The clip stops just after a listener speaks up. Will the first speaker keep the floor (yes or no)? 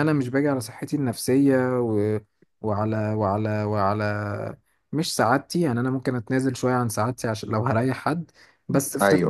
yes